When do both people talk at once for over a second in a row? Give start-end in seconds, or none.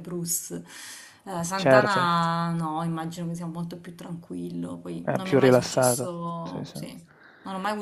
5.0-6.8